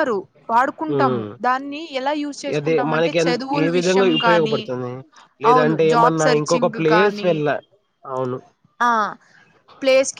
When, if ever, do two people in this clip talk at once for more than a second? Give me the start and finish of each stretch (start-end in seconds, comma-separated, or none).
2.6-4.6, 5.5-7.3